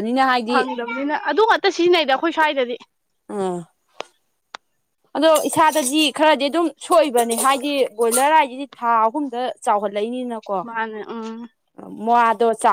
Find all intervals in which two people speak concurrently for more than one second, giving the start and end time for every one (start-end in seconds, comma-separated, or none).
none